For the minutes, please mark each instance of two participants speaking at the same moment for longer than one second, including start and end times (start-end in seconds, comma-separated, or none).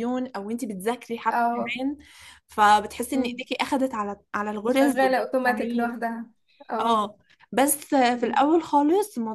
4.7-5.9